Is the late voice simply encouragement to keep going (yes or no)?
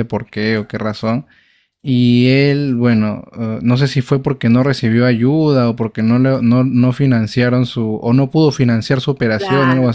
no